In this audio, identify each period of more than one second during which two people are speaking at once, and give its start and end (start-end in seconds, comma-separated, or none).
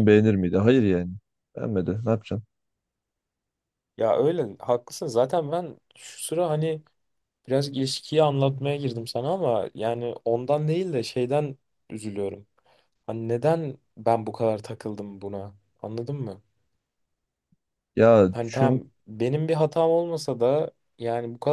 none